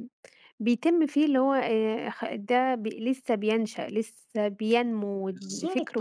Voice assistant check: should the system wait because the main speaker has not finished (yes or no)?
yes